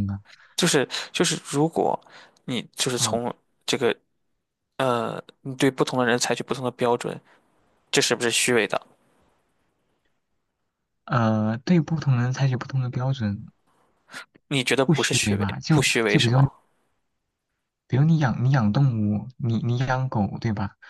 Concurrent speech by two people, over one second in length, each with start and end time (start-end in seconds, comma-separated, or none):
14.8-16.5